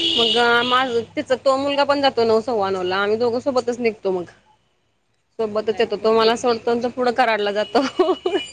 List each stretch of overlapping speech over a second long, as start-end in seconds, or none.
5.6-6.9